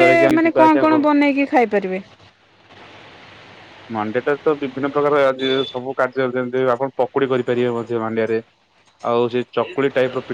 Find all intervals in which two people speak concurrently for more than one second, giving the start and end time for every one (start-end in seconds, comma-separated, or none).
none